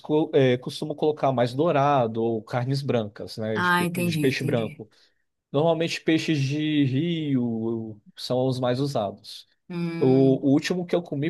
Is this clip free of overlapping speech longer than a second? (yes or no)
no